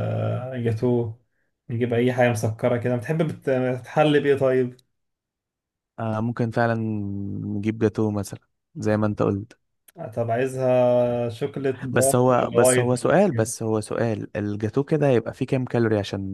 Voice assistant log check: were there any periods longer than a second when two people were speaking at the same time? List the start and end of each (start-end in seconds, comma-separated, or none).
11.9-13.5